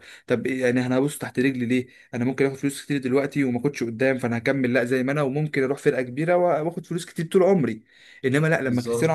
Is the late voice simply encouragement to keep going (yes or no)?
yes